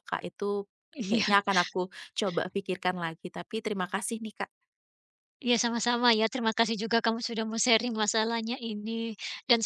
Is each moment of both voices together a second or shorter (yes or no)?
yes